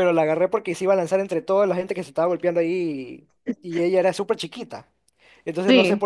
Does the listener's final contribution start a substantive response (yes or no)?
no